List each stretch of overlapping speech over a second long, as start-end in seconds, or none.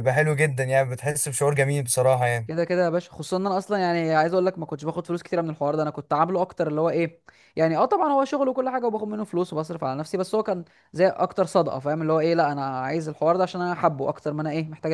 none